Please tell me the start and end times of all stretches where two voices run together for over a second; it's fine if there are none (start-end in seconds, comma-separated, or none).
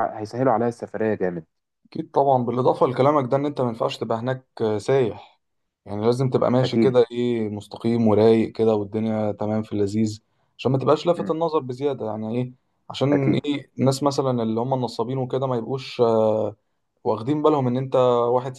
none